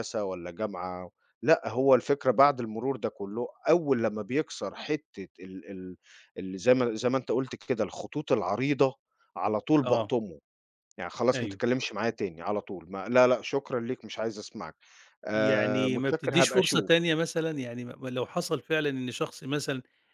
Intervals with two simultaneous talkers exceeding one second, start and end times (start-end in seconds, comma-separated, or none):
15.3-16.9